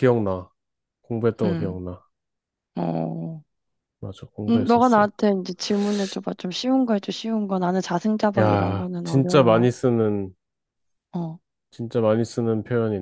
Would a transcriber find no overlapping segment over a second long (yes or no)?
no